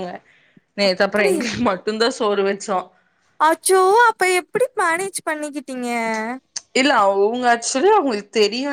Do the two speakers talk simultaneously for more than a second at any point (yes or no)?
no